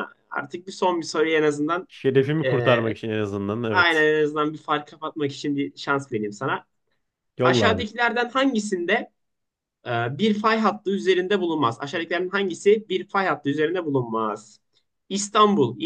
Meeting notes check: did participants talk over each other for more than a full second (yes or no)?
no